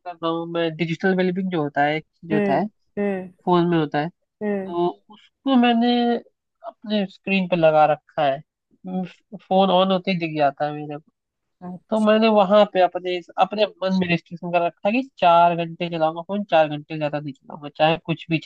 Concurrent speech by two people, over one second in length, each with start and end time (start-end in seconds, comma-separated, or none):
none